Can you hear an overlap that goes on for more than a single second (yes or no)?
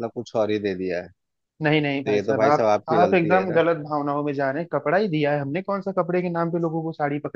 yes